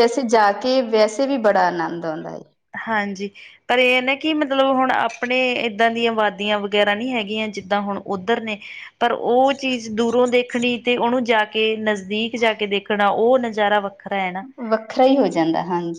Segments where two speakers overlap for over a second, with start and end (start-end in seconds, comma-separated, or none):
none